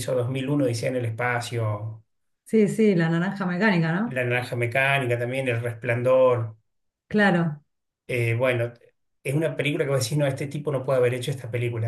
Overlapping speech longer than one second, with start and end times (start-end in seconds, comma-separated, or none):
none